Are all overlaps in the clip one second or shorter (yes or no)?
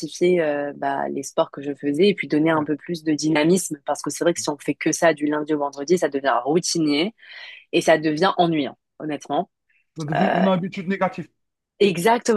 yes